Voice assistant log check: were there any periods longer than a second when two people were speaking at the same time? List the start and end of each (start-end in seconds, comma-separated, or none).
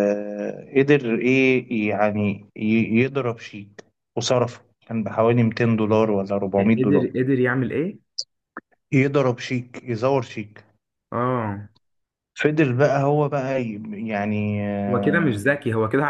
none